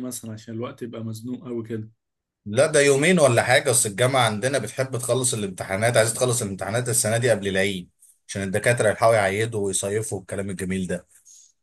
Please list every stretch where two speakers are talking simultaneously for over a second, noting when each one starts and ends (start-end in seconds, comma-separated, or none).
none